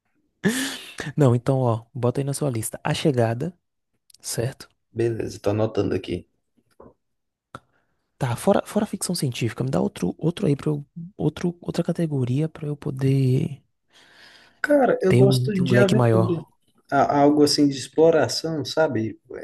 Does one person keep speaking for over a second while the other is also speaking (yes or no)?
yes